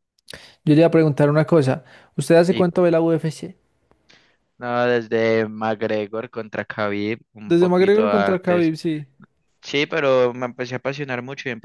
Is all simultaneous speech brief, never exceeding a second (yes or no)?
no